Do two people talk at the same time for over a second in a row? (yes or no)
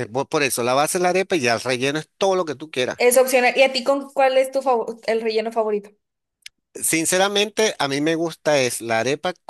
no